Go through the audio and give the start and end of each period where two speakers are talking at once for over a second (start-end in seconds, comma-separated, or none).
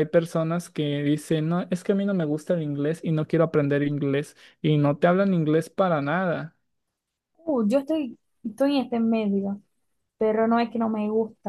none